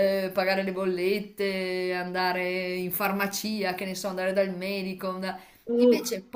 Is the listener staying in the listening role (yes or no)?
yes